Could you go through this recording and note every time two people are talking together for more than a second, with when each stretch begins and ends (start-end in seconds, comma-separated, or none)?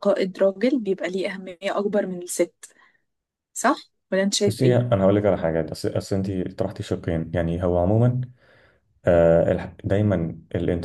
none